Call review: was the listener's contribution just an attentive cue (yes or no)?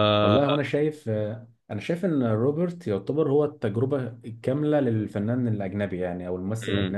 yes